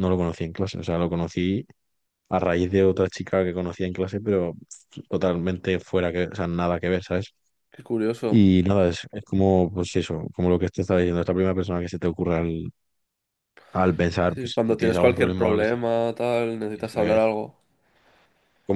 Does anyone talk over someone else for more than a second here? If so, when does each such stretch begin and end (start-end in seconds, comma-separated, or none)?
14.3-15.8